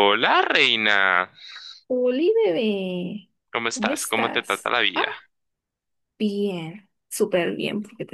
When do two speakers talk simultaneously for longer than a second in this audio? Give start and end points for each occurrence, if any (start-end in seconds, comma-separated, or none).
3.7-5.0